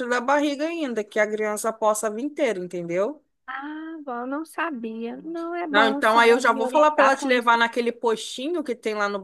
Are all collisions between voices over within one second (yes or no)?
no